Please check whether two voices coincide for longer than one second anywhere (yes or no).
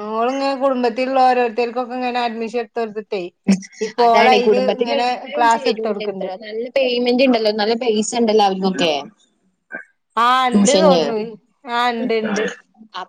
yes